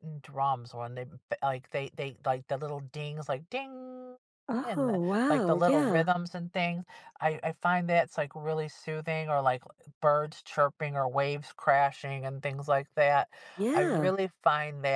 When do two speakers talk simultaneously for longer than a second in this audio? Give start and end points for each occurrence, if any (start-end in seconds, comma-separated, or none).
4.6-6.0